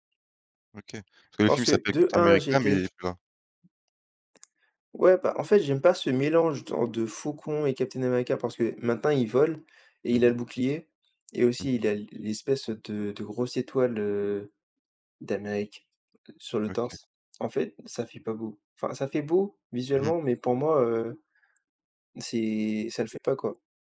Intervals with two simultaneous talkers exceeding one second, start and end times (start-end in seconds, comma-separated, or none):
1.4-2.9